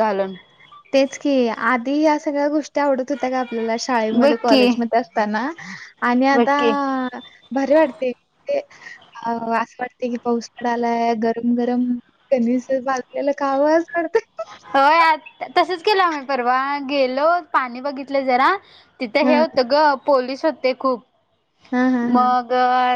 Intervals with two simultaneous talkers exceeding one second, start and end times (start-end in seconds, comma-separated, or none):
none